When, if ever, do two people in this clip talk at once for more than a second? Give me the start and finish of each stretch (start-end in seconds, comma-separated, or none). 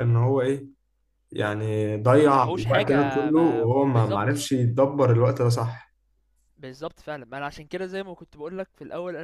2.1-4.4